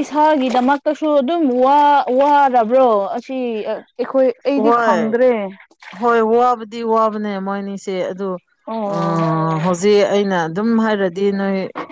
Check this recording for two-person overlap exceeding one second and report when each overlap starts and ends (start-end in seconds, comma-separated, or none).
none